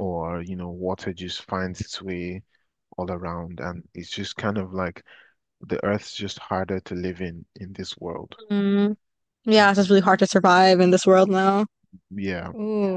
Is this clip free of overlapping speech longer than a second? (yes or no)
yes